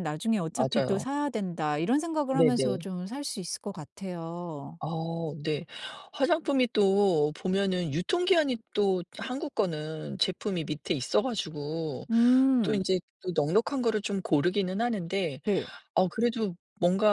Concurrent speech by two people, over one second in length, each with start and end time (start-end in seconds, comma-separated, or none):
none